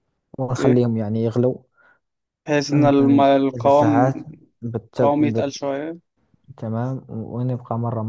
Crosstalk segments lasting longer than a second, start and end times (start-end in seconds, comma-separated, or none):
2.7-4.1